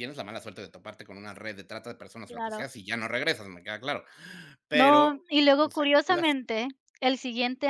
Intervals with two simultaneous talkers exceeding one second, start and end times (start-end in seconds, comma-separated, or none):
4.7-6.4